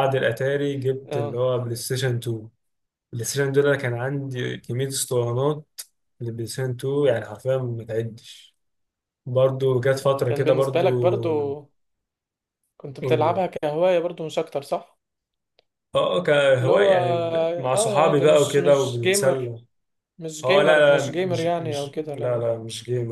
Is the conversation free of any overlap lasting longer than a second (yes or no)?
no